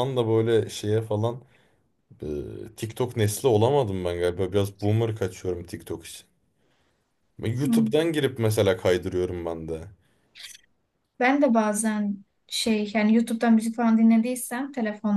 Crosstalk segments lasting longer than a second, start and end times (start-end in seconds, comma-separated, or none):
none